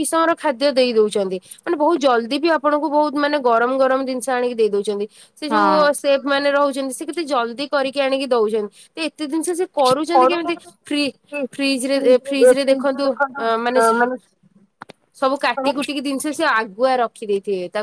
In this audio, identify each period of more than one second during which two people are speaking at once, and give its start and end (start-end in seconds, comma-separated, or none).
11.9-13.8